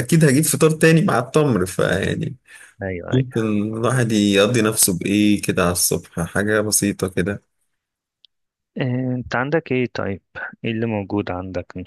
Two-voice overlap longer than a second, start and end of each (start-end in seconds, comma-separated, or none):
none